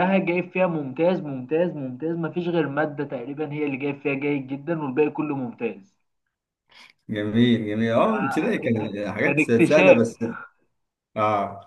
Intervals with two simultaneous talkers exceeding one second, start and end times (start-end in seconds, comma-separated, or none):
8.1-10.0